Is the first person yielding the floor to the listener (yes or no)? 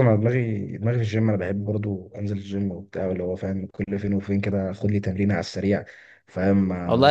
yes